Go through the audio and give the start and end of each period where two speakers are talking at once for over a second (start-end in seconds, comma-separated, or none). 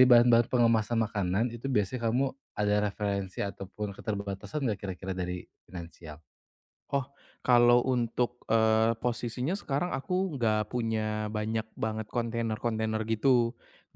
none